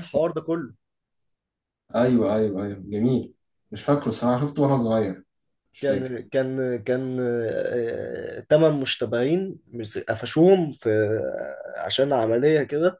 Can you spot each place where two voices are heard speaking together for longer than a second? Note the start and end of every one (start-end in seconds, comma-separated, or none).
none